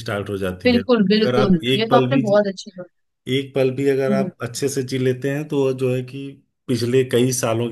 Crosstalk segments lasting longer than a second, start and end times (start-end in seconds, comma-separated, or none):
0.6-2.4